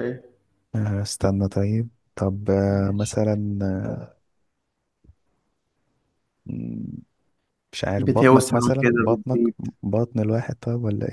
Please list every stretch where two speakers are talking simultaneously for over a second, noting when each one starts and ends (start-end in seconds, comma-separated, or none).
8.0-9.4